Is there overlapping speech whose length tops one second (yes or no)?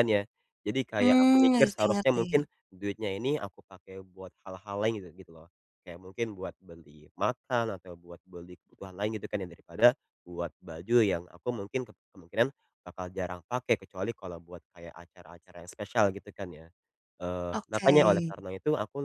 yes